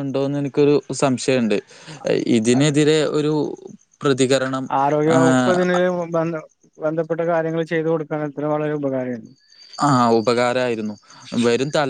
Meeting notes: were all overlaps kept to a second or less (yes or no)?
yes